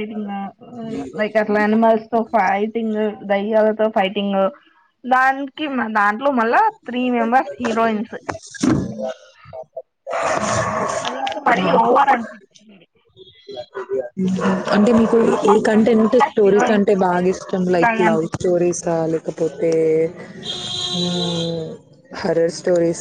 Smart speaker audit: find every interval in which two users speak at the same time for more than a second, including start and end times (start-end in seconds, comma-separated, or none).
15.2-18.5